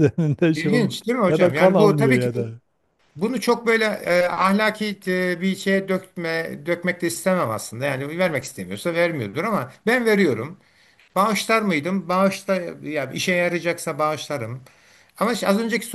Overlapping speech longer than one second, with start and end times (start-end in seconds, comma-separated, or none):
0.5-2.3